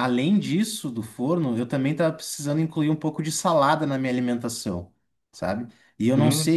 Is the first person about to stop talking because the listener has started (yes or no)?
no